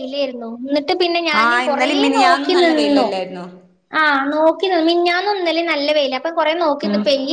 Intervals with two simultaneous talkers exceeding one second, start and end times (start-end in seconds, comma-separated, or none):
1.4-3.1